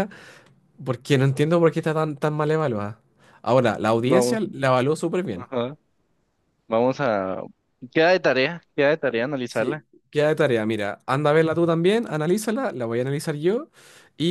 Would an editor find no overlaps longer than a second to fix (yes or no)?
yes